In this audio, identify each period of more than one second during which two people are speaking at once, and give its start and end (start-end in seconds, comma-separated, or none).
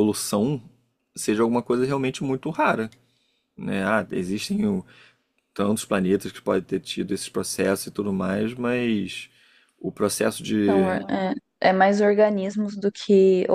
none